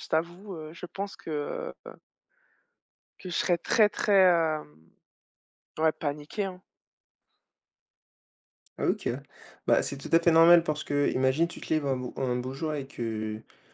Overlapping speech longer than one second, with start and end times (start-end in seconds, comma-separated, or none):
none